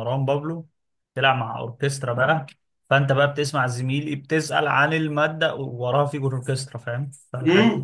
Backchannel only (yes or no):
no